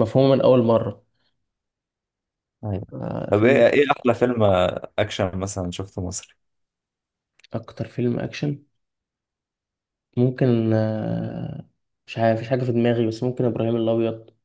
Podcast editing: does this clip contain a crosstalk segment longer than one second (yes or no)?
no